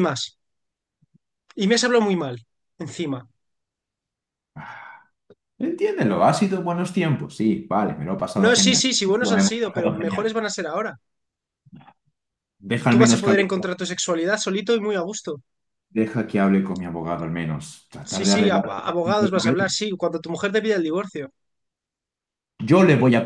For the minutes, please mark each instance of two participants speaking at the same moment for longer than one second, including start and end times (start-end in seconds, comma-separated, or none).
8.4-10.3, 18.1-19.8